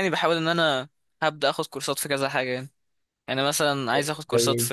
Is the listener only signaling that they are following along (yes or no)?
yes